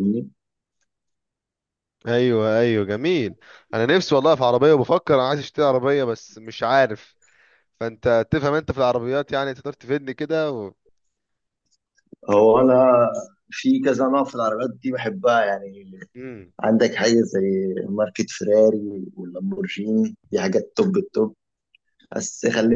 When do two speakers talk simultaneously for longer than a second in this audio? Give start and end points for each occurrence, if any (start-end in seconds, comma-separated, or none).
none